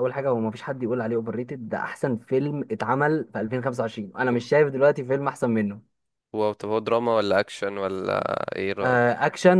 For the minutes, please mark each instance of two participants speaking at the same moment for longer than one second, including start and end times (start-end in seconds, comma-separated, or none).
none